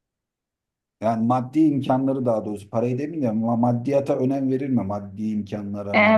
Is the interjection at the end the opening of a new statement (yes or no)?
yes